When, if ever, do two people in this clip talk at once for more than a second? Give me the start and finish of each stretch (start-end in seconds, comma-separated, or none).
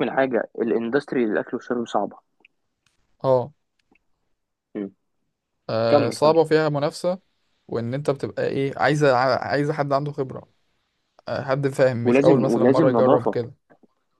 12.0-13.4